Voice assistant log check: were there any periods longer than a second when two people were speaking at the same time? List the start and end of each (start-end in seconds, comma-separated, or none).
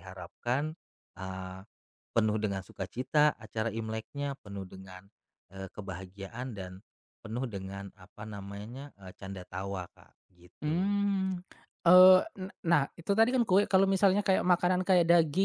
none